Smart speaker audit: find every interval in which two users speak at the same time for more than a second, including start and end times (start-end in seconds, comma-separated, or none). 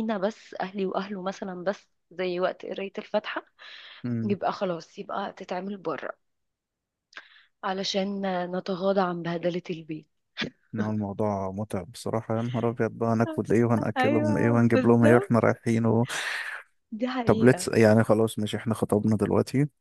14.0-15.3